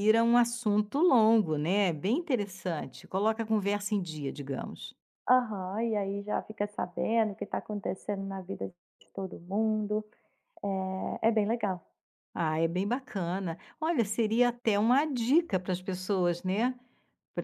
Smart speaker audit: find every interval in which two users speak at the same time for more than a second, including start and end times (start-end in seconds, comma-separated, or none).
none